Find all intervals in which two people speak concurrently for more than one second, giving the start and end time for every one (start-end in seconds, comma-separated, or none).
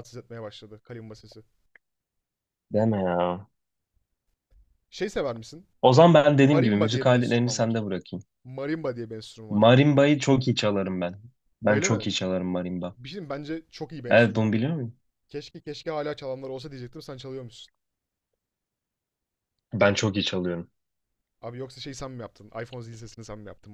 6.4-7.9